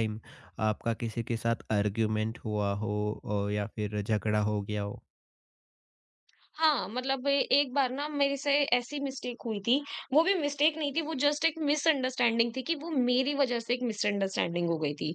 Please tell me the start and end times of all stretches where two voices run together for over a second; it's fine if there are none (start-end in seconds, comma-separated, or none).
none